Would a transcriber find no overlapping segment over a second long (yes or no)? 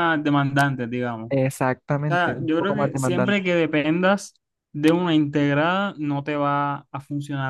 no